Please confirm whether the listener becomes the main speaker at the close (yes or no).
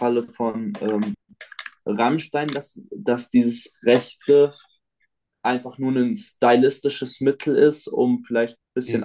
no